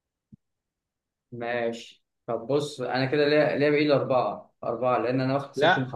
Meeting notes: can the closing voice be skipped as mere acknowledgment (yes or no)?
yes